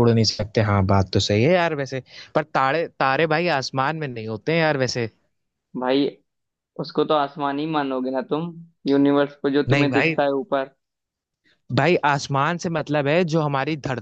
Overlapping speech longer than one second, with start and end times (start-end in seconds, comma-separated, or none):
none